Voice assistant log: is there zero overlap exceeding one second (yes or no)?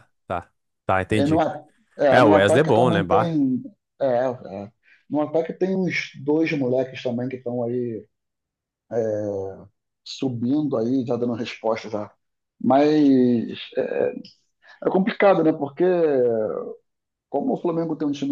no